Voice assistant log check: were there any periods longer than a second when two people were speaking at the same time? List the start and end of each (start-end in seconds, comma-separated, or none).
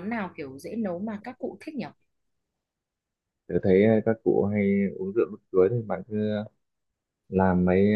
none